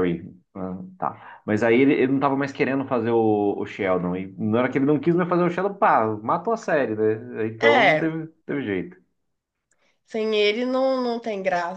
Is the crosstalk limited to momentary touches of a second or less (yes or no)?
yes